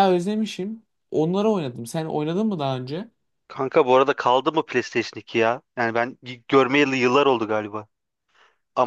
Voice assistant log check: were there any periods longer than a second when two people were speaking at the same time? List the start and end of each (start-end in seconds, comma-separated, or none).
none